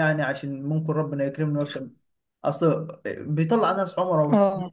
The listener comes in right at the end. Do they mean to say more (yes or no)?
no